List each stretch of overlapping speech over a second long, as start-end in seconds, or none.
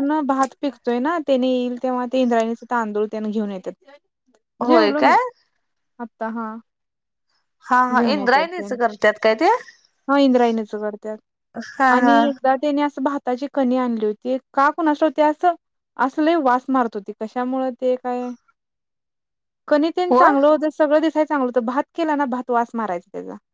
none